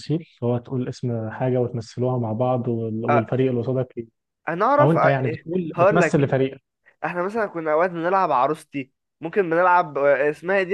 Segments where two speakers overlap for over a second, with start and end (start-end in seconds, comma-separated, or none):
4.8-6.4